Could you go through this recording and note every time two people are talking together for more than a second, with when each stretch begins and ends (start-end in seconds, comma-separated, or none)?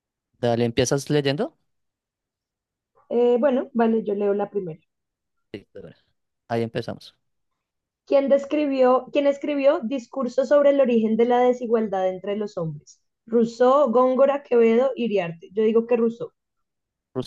none